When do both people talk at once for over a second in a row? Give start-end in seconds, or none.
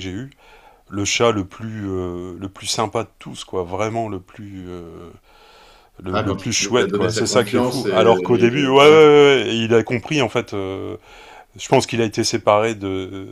6.1-9.0